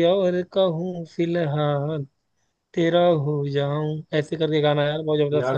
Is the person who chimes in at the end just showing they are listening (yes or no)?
no